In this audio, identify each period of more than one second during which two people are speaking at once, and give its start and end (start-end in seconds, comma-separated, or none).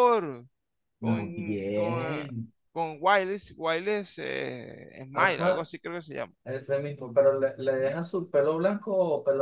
1.0-2.3